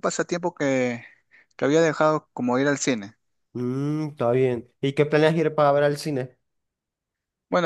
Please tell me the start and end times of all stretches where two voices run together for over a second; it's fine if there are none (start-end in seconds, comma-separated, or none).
none